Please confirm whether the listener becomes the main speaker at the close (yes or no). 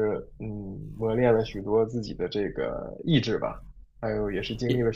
no